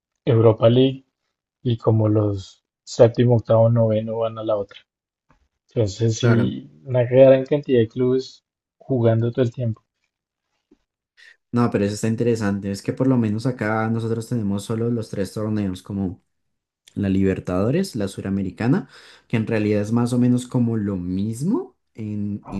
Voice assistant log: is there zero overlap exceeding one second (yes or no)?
yes